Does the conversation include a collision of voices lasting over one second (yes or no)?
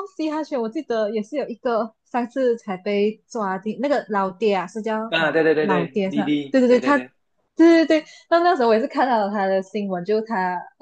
yes